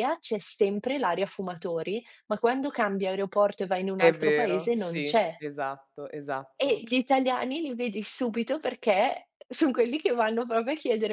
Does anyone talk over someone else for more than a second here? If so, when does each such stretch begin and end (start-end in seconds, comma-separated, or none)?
4.0-5.3